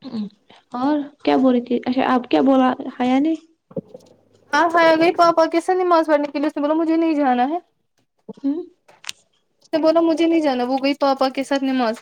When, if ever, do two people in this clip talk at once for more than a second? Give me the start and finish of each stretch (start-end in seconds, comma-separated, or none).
none